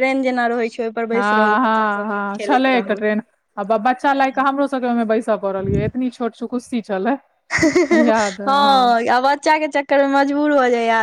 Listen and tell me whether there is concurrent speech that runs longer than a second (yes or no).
no